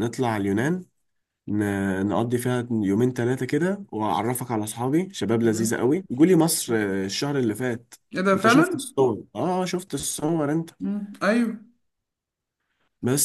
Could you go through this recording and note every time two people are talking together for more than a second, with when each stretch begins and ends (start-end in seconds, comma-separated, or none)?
none